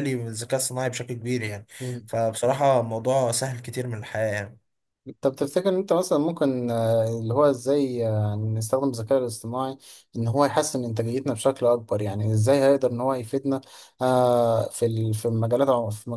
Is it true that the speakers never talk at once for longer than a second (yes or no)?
yes